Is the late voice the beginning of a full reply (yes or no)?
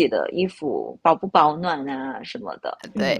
yes